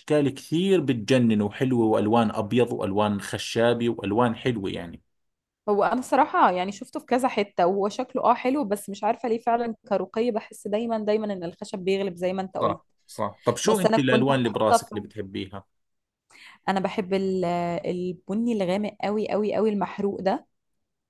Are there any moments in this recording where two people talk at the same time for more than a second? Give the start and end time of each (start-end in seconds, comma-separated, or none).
13.7-14.9